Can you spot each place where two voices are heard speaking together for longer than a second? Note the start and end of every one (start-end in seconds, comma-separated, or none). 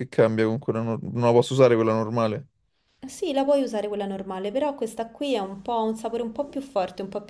none